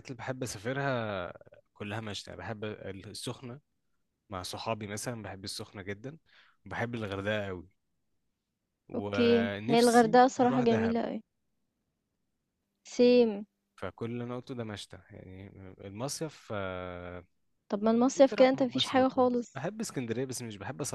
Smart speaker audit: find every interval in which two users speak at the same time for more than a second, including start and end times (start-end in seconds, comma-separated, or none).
8.9-11.0, 18.2-19.6